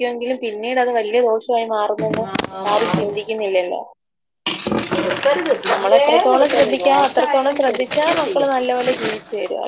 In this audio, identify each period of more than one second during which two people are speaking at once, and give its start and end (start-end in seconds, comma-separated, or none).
5.7-8.6